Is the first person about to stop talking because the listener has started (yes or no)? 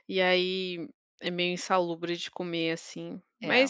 no